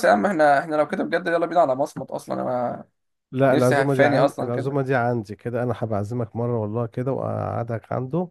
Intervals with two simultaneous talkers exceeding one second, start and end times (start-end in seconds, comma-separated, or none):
3.5-4.8